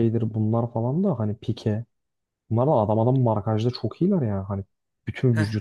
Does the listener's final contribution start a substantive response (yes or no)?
no